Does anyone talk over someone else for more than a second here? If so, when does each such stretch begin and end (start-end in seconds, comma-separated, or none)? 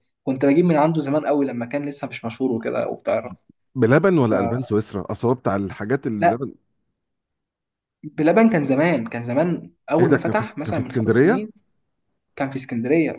10.0-11.5